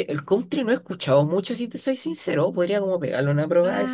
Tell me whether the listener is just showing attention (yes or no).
no